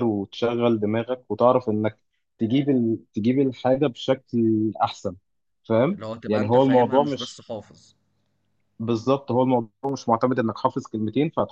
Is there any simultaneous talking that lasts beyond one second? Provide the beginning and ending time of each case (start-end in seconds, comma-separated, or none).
5.9-7.5